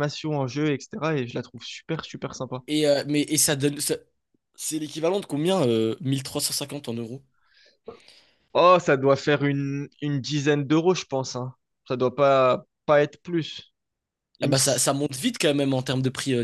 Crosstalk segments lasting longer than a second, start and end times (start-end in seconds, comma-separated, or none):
none